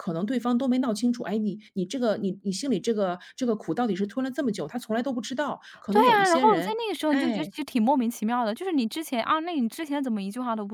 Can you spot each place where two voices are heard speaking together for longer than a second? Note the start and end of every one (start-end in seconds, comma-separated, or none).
5.9-7.5